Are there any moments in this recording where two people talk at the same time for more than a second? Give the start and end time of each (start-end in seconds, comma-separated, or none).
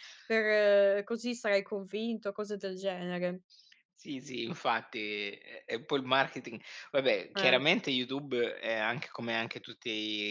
none